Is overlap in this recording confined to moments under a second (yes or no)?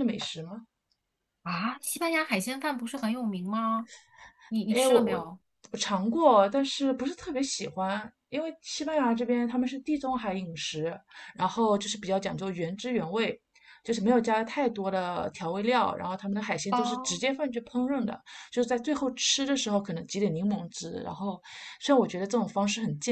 yes